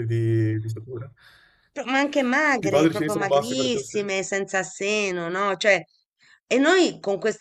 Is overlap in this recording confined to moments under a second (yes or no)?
no